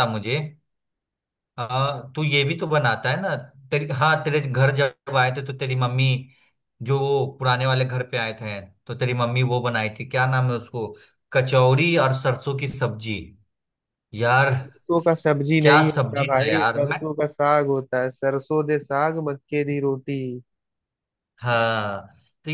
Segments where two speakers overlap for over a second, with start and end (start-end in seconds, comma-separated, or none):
15.6-17.0